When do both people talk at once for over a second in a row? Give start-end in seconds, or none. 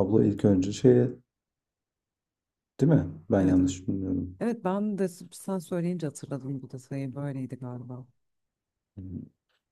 none